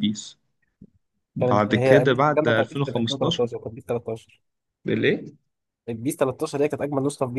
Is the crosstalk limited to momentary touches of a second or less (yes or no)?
no